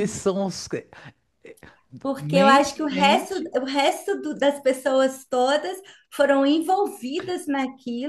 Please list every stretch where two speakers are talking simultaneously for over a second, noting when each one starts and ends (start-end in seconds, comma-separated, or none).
2.2-3.5